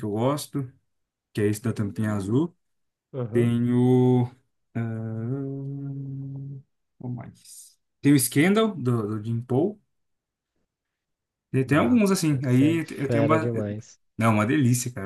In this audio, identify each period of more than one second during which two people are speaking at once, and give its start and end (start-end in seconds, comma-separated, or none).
11.7-13.5